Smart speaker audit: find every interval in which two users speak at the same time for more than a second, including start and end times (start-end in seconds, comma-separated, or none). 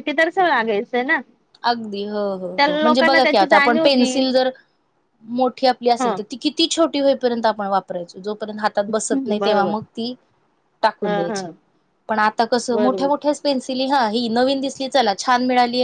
2.6-4.1